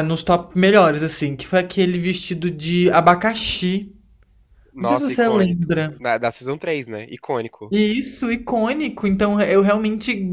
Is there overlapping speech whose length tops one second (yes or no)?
yes